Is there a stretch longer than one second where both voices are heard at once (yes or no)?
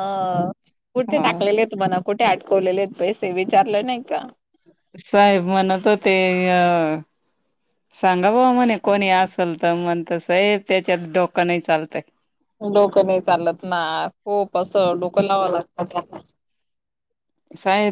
no